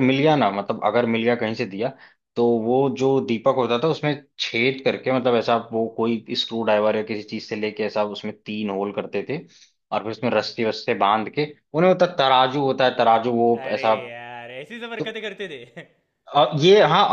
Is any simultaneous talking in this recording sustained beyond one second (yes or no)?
no